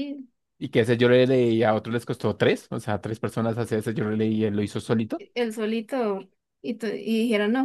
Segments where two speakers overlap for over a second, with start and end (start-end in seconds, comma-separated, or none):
none